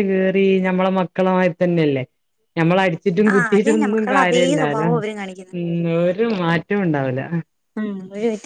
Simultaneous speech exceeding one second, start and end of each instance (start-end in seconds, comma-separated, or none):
3.3-4.9